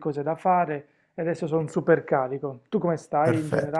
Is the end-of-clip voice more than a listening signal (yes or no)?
yes